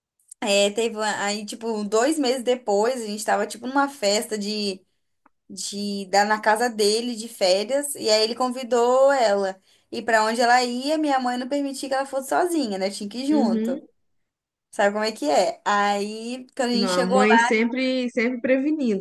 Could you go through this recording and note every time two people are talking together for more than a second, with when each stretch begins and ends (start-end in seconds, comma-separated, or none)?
none